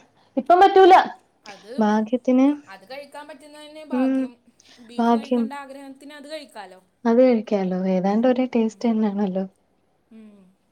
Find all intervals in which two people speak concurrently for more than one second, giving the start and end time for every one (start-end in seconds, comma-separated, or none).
none